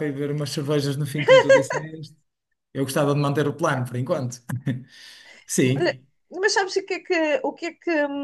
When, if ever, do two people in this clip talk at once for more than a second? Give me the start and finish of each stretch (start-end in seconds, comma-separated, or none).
none